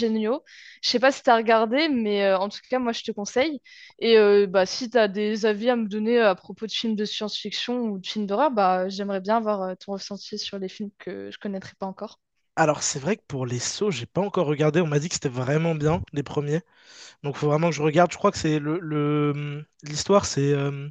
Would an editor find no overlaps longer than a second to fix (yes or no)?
yes